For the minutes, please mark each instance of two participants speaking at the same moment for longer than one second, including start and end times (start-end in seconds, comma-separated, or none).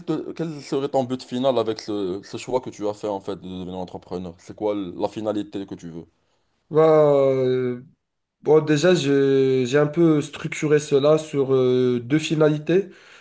none